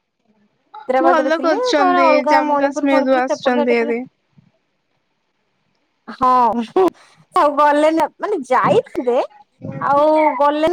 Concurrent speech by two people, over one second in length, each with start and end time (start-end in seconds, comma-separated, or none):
1.0-3.9